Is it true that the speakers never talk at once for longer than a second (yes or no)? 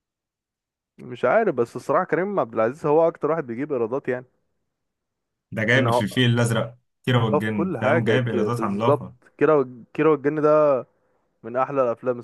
no